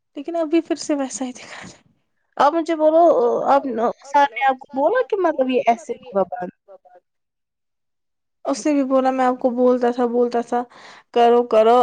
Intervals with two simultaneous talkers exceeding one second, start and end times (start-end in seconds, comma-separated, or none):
none